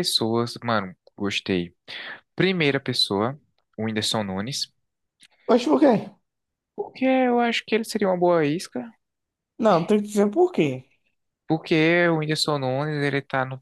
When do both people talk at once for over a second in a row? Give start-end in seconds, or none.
none